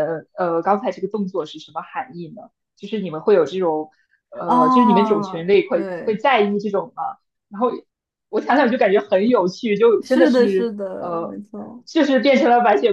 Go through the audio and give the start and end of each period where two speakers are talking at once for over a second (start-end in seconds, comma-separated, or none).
4.4-6.2, 10.0-11.4